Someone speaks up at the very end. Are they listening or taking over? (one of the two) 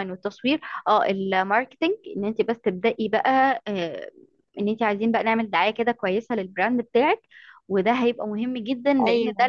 listening